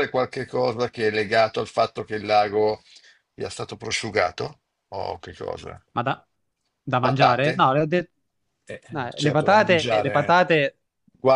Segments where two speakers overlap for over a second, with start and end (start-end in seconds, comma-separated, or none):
8.9-10.4